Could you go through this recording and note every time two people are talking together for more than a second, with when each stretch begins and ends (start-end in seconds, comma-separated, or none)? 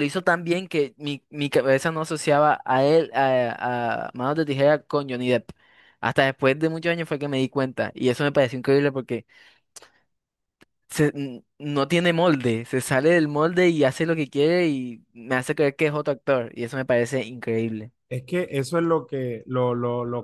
none